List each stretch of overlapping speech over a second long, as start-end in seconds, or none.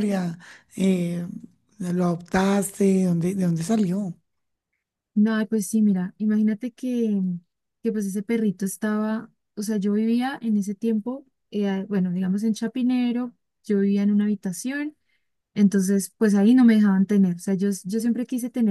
none